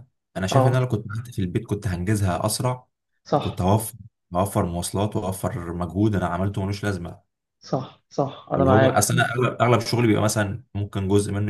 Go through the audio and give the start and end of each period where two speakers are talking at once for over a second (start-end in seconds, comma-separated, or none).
none